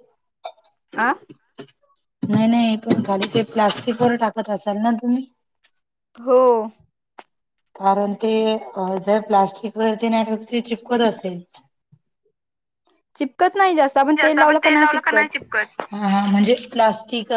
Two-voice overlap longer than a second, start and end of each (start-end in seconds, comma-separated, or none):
none